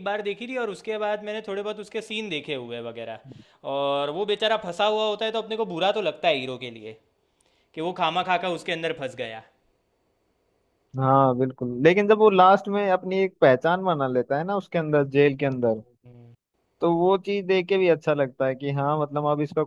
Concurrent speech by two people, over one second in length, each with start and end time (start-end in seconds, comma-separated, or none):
none